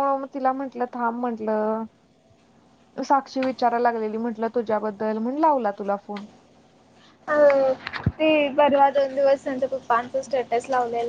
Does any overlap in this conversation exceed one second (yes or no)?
no